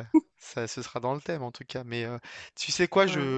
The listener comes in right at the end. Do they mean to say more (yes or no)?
no